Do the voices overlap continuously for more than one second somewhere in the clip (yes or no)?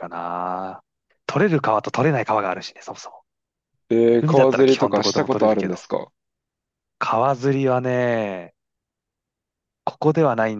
yes